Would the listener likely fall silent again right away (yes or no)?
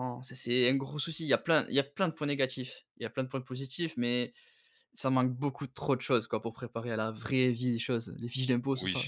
no